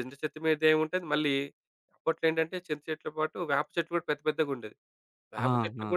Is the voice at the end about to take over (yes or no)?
no